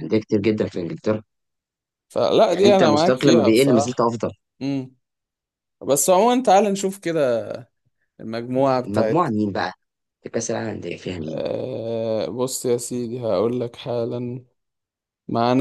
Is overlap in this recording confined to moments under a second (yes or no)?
no